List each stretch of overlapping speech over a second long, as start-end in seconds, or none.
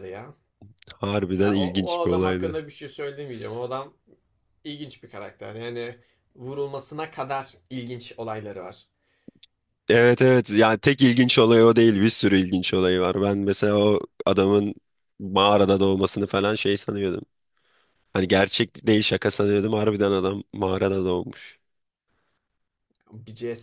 1.3-2.6